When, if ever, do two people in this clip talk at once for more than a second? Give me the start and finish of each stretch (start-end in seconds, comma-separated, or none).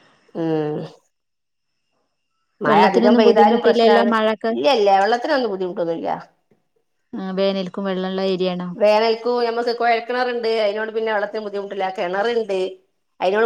2.7-4.1